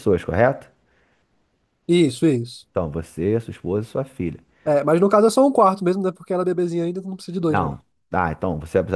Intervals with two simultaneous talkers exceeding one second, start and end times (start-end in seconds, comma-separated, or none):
none